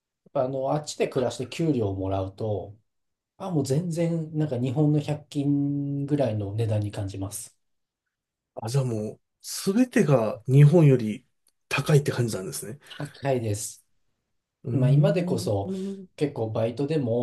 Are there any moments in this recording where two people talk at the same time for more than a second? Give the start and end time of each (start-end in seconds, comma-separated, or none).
none